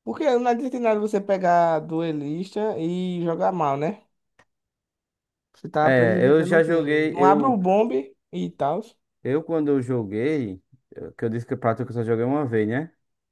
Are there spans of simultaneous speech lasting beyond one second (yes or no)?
yes